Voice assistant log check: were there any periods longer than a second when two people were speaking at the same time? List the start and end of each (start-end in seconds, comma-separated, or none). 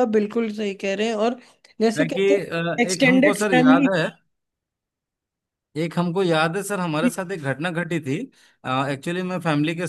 2.0-3.9